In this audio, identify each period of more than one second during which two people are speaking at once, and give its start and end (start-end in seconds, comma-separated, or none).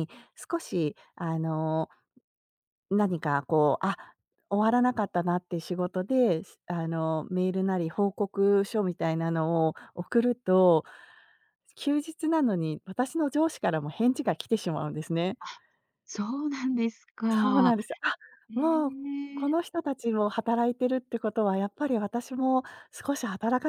none